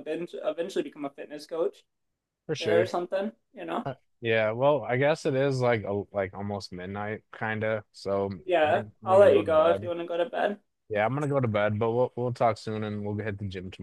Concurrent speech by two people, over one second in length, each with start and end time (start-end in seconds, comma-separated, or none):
8.4-9.9